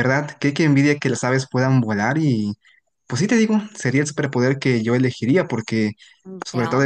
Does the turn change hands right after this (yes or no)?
no